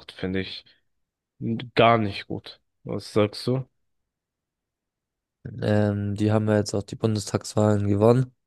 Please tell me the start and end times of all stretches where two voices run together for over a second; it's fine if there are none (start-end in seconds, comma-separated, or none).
none